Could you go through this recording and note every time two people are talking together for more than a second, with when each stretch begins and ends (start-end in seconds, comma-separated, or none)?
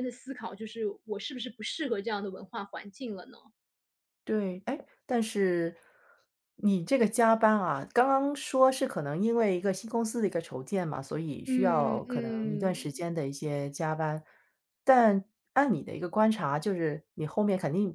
11.5-13.0